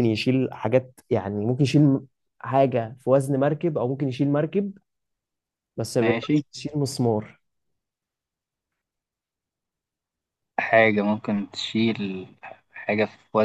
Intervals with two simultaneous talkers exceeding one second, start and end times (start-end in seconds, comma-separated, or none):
none